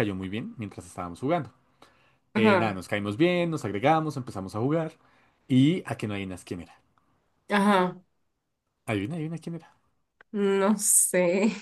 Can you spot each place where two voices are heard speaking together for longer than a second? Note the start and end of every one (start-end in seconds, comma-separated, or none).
none